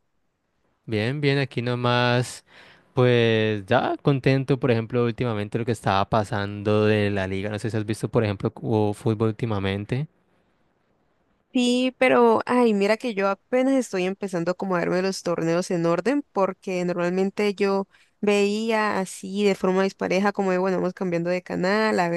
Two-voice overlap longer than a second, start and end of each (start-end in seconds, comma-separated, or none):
none